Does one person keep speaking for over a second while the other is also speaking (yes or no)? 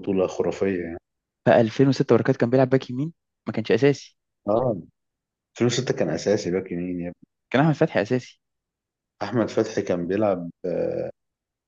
no